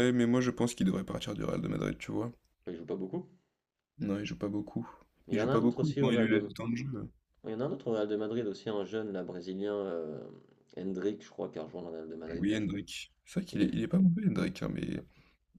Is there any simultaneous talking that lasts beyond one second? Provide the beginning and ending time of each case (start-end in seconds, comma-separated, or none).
5.3-6.5